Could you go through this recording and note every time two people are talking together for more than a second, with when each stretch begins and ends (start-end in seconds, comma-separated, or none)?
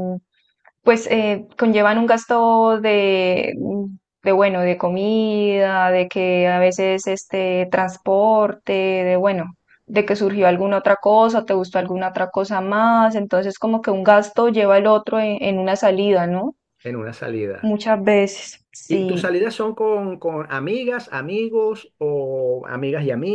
none